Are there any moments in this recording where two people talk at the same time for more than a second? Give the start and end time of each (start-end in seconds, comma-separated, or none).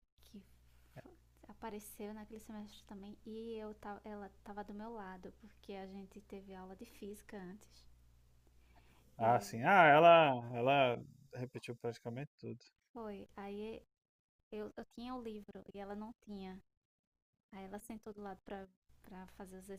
none